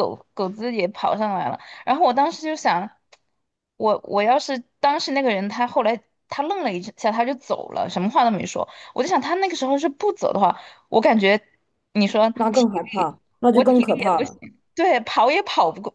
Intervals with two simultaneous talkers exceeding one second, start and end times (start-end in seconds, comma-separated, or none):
12.3-14.4